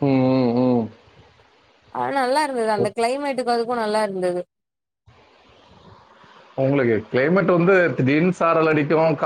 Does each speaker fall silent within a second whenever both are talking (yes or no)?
yes